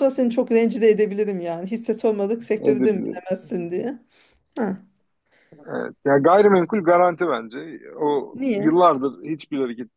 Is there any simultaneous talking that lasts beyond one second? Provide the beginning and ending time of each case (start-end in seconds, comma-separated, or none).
none